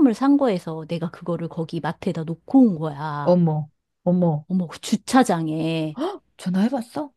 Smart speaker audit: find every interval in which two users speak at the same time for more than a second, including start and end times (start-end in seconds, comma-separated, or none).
none